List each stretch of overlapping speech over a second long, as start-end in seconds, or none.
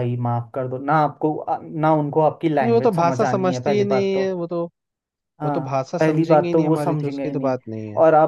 2.6-4.2, 5.4-7.5